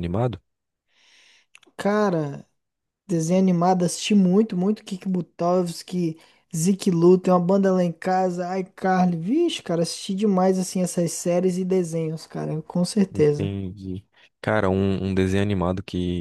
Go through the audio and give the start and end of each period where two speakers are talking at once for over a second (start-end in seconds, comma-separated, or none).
none